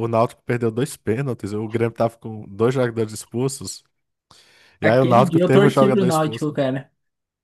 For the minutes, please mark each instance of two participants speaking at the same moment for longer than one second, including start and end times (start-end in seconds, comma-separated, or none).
4.8-6.6